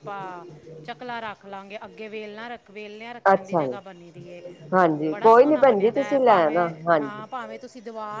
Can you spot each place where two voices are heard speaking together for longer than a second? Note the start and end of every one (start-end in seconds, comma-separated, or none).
5.1-6.7